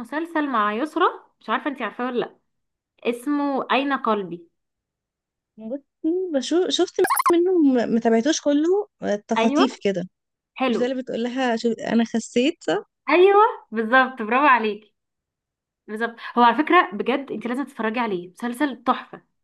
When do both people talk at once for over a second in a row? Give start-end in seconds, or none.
none